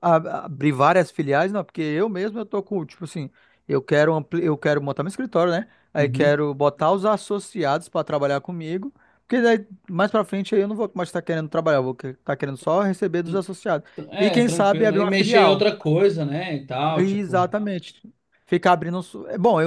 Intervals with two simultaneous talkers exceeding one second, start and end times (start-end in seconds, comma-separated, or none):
14.1-15.6